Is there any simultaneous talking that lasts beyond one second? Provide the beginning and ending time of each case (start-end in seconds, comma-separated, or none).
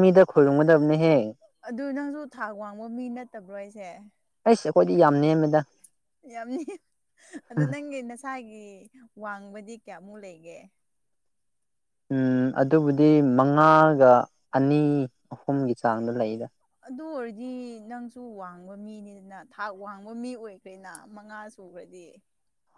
none